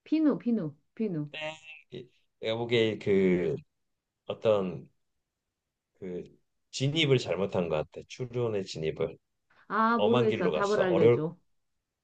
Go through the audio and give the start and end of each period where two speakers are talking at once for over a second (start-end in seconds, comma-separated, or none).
10.0-11.2